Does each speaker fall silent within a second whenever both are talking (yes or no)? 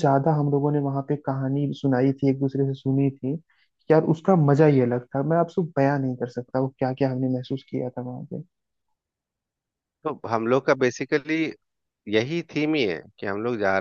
yes